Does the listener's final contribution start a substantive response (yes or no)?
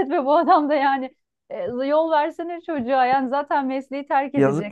no